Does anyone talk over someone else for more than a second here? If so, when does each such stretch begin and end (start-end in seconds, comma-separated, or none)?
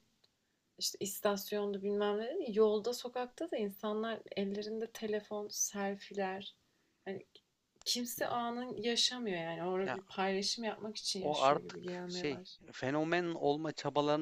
11.2-12.6